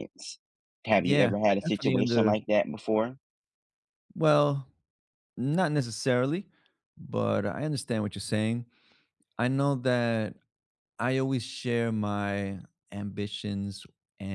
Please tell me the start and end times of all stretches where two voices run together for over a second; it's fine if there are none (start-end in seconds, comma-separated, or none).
1.0-2.3